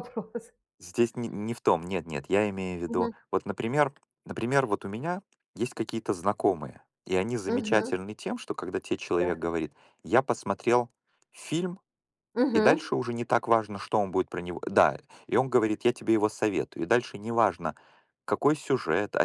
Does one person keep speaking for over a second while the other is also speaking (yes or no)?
no